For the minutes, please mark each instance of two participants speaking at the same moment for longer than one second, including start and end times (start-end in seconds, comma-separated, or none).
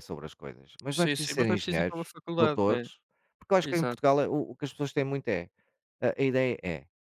0.9-2.9